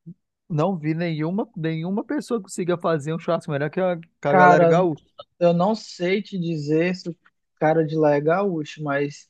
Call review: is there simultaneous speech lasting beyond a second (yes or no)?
no